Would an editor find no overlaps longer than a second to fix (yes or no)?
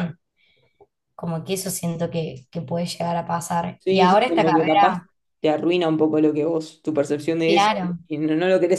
no